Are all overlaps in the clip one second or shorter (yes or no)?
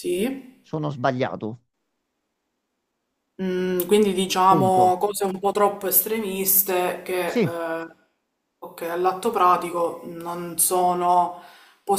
yes